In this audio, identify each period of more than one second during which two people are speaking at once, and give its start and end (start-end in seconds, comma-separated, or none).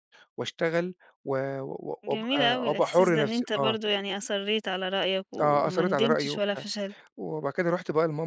2.0-3.8, 5.4-6.6